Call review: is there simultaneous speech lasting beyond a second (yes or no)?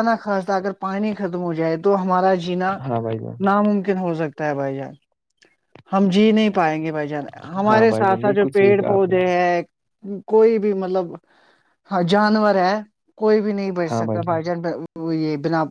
yes